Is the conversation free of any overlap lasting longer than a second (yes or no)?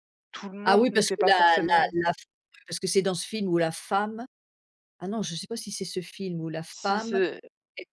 no